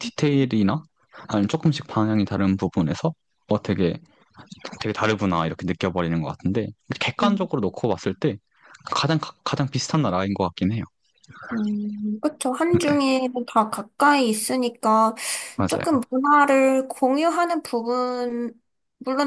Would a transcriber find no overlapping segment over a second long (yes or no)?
yes